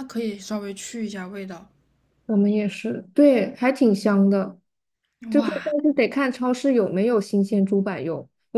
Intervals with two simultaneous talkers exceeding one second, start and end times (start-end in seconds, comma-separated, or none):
none